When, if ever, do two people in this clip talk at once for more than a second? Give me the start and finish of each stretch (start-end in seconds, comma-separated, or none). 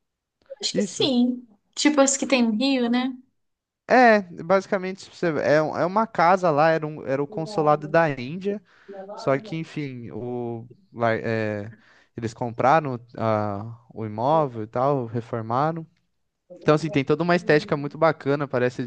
none